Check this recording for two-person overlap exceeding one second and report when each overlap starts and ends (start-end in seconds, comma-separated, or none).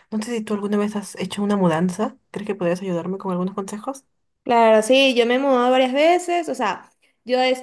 none